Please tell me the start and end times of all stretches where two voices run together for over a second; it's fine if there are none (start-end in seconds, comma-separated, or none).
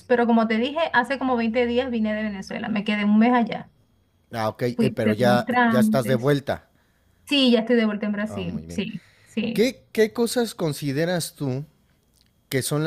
4.7-6.3